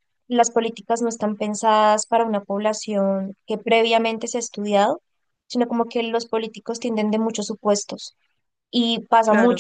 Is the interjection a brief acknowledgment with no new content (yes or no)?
yes